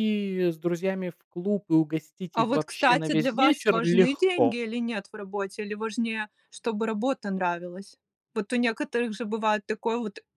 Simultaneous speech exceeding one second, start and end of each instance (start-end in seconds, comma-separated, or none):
2.3-4.6